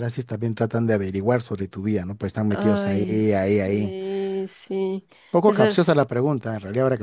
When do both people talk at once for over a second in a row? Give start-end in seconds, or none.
2.5-3.9